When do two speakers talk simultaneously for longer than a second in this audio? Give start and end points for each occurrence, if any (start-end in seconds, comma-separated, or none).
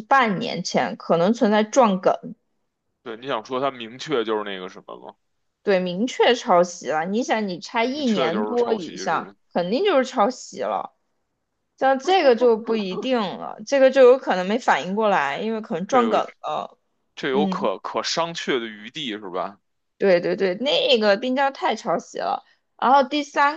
7.9-9.3